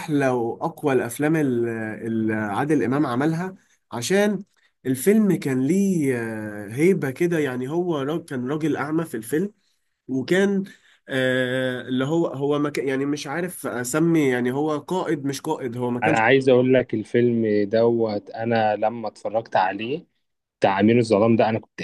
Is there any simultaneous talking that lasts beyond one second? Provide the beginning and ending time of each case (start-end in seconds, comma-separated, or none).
none